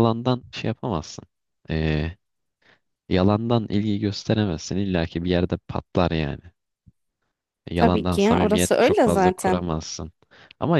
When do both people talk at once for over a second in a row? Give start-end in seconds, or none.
7.8-9.6